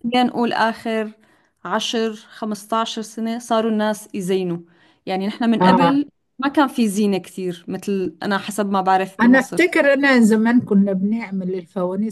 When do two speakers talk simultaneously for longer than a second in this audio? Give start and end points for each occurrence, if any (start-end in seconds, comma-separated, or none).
none